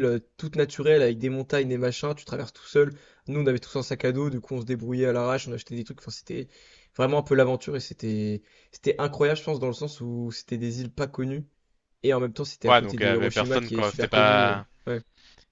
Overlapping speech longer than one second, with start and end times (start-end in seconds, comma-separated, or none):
12.7-14.7